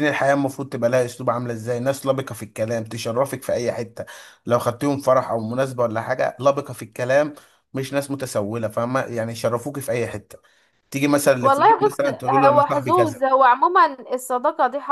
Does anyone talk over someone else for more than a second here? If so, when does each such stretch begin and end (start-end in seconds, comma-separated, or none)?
11.4-13.2